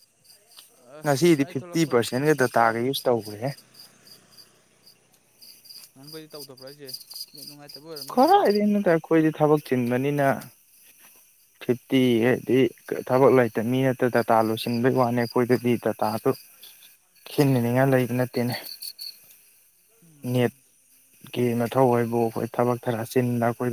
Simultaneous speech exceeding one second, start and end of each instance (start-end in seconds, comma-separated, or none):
1.0-3.4